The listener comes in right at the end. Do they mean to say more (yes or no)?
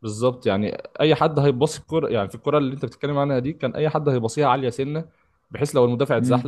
no